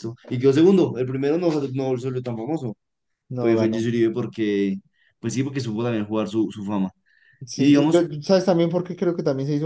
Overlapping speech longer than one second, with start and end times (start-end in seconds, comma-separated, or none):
none